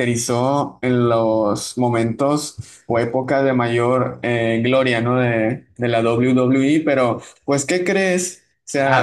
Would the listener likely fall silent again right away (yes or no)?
yes